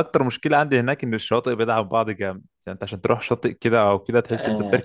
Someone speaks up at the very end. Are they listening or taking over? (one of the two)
taking over